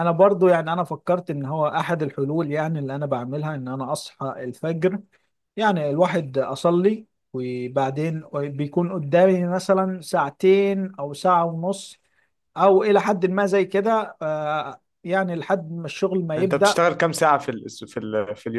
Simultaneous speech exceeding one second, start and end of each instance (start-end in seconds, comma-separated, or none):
none